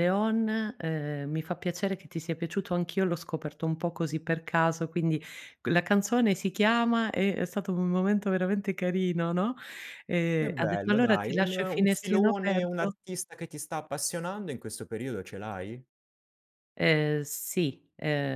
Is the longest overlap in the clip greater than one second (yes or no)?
yes